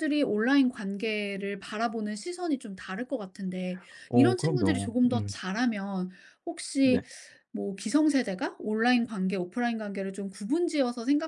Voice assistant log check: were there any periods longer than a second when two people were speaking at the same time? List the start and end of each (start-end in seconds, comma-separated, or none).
4.1-5.4